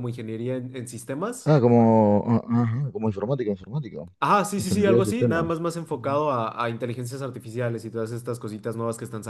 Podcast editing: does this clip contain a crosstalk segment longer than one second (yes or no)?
yes